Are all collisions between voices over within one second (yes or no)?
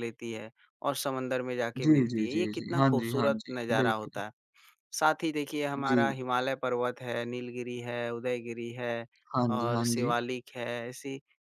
no